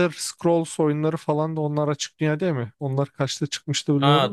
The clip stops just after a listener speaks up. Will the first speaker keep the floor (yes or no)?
no